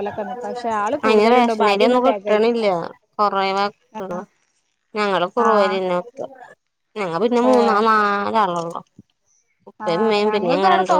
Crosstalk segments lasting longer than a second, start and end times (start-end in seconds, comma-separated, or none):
1.1-2.6